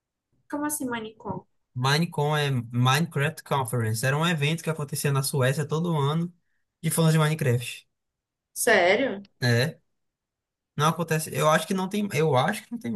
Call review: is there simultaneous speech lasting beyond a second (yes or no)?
no